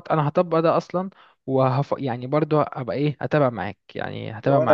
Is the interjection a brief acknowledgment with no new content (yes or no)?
no